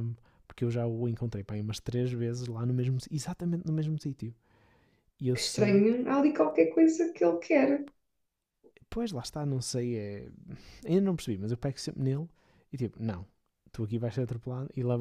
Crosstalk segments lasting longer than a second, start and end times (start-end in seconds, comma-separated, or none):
none